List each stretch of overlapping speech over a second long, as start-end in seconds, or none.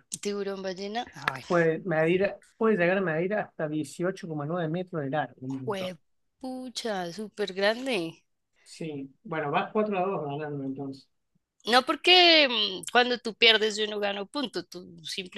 none